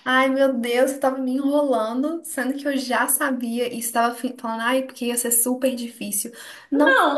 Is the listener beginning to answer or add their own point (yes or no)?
yes